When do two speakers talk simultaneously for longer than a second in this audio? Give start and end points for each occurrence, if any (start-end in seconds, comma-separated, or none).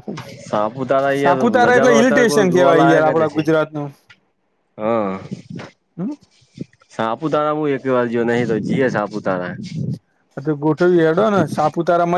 1.2-3.4